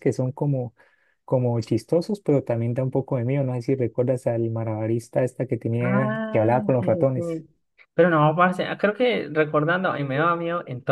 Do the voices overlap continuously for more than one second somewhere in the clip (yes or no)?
yes